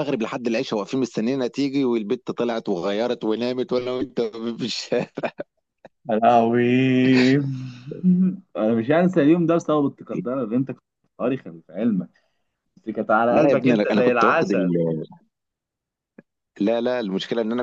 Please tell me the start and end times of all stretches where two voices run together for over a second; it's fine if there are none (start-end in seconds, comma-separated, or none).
13.3-14.7